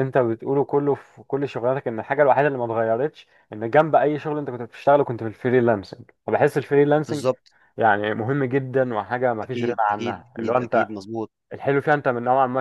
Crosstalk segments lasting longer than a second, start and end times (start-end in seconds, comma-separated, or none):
9.4-10.9